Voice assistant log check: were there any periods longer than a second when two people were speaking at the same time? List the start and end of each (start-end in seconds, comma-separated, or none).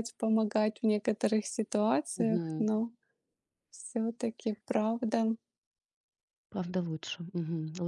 none